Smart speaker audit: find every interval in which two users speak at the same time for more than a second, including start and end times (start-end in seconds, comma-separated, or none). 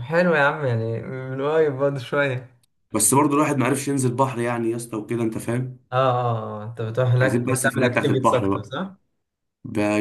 7.2-8.7